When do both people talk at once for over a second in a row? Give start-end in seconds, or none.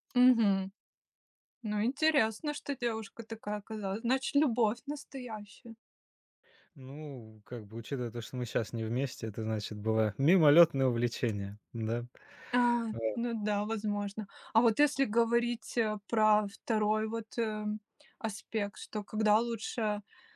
none